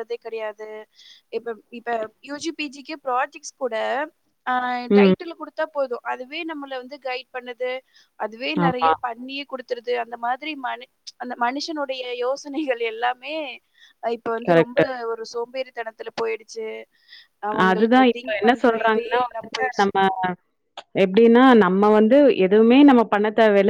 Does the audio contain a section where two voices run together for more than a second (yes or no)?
yes